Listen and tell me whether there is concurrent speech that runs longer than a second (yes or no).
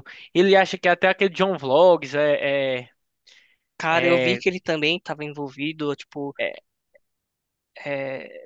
no